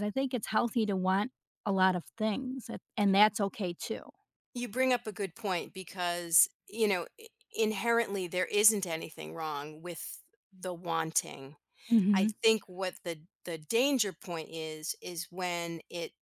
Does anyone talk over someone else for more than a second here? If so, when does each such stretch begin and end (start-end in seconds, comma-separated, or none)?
none